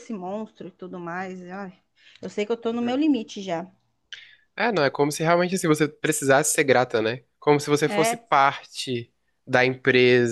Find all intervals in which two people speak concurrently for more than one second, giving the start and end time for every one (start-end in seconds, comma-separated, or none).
none